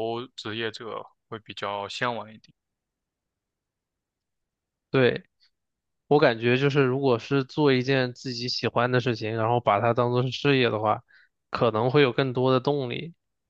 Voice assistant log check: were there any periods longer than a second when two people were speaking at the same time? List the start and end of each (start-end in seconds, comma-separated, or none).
none